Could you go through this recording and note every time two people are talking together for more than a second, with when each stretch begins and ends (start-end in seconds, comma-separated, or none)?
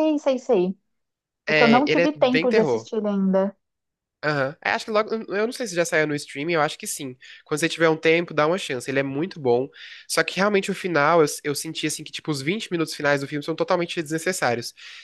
1.5-2.9